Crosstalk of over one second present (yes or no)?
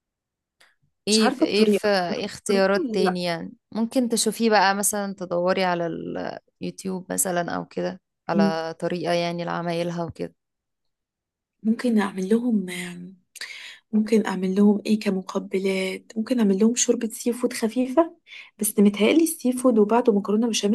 yes